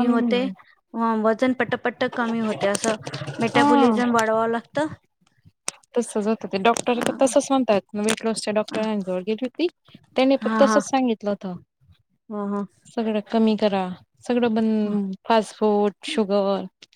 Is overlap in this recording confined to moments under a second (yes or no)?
yes